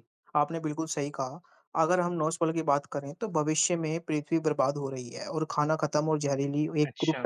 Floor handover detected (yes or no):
no